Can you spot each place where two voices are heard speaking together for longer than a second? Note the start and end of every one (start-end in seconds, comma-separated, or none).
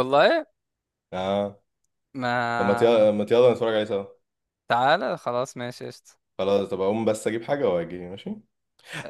none